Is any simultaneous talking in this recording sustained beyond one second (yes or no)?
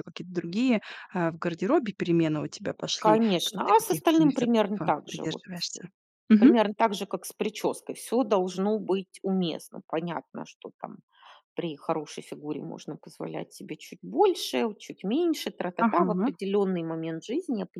yes